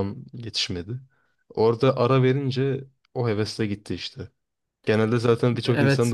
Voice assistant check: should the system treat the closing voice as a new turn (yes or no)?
yes